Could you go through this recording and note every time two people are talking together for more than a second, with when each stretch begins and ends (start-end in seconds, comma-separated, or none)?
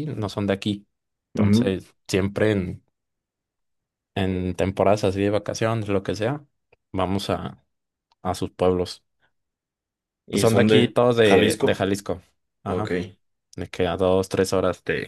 10.3-11.9